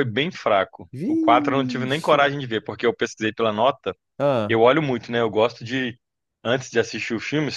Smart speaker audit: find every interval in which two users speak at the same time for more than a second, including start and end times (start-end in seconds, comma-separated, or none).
0.9-2.3